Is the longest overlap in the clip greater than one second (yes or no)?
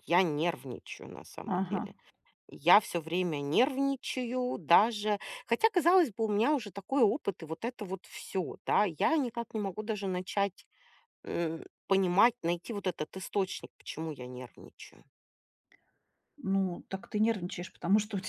no